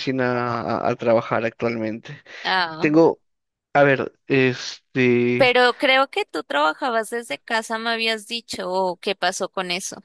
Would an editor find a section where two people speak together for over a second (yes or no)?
no